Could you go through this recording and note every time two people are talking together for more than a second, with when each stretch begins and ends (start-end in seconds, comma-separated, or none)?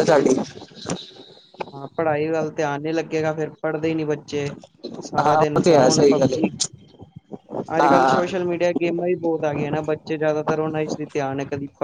5.0-6.5